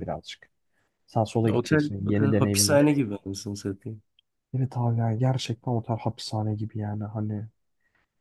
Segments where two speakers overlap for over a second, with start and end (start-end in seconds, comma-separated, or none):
1.6-2.9